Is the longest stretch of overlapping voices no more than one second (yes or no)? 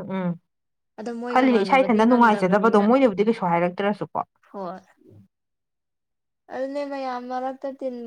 no